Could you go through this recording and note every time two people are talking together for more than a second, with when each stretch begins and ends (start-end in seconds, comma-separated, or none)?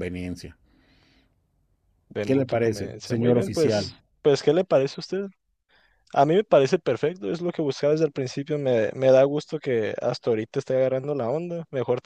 2.2-4.0